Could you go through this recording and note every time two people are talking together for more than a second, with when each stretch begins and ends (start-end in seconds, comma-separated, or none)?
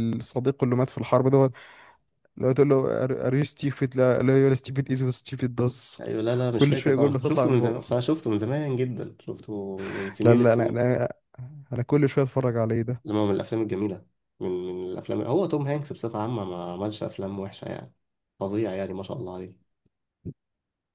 6.6-8.0